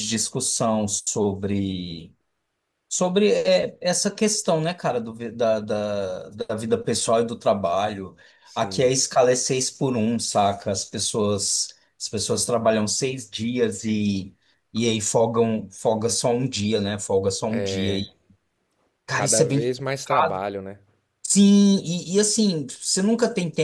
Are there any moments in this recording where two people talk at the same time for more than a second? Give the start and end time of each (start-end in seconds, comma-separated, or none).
19.1-20.4